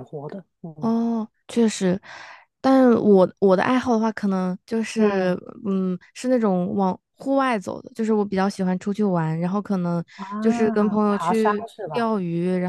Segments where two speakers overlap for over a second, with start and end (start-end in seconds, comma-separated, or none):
10.4-12.1